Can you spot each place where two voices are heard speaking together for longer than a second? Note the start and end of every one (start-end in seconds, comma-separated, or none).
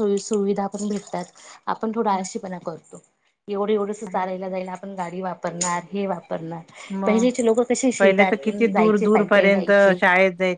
8.0-9.9